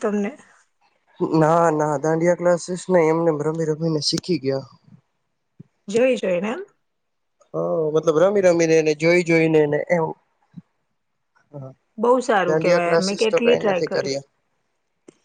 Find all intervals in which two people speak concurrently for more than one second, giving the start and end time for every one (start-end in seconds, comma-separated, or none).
12.5-14.1